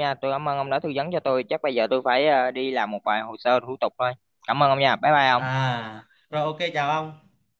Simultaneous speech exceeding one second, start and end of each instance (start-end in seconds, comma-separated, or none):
none